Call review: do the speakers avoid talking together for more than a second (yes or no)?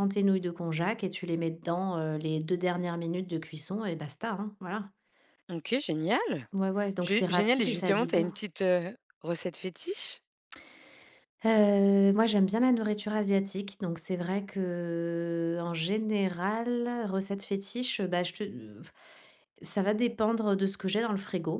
no